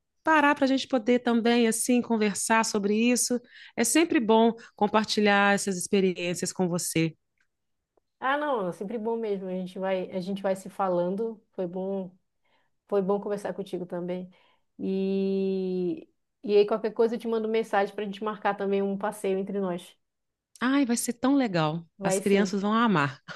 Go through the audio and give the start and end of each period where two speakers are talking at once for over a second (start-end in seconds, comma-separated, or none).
none